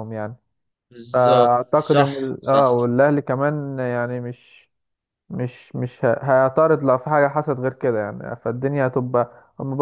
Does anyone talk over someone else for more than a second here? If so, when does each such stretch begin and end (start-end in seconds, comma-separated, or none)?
1.1-2.6